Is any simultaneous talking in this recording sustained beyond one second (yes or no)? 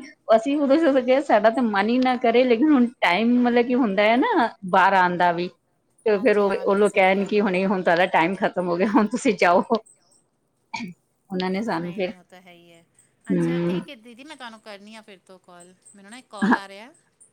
yes